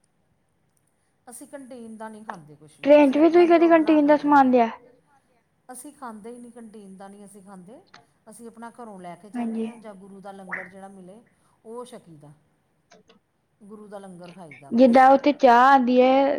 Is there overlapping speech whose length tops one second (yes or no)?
yes